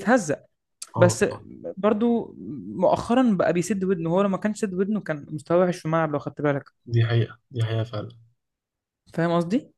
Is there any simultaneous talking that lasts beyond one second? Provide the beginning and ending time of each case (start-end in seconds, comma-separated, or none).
none